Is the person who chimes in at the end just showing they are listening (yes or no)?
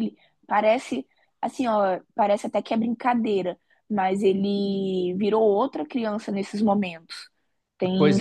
no